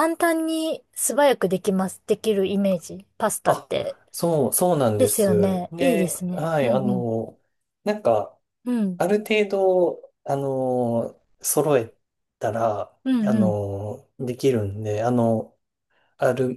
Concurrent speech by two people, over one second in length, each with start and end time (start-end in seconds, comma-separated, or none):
5.0-7.1